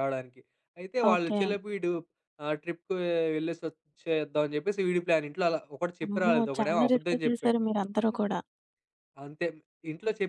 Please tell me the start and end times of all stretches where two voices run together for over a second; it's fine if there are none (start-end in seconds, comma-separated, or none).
6.1-7.6